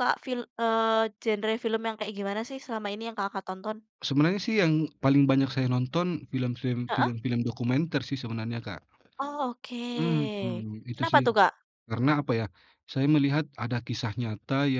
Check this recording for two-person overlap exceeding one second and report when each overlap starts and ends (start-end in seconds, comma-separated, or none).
none